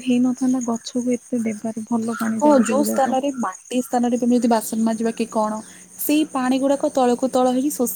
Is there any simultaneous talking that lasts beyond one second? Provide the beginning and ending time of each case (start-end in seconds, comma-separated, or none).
none